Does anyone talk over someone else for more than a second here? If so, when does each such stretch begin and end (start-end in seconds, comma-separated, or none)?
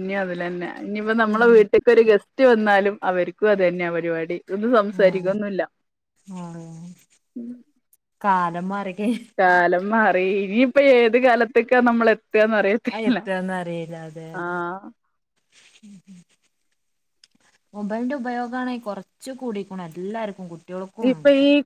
none